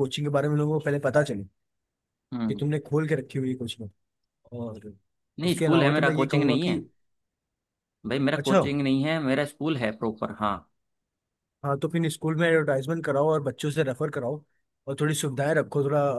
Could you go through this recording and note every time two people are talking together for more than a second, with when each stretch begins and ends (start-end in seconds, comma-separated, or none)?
5.4-6.8